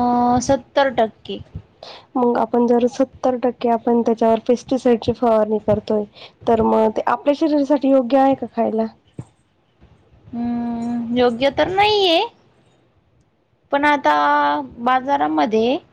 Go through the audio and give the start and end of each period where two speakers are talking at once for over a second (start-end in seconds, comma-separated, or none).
none